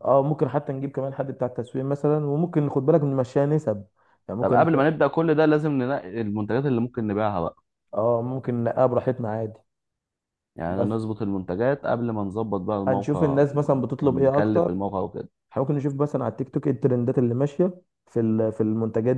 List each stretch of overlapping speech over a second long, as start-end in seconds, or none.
12.9-14.7